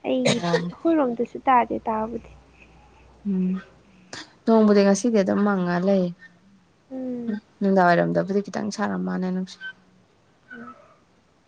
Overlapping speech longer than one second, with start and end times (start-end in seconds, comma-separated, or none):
none